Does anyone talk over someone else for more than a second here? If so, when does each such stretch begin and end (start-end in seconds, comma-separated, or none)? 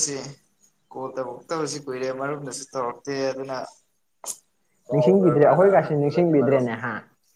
4.9-6.7